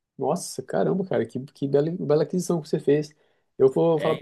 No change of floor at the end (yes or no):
yes